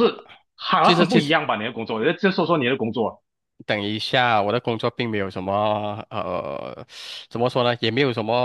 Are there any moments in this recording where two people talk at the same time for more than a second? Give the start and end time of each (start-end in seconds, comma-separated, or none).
none